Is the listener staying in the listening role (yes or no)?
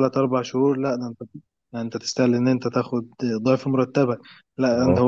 yes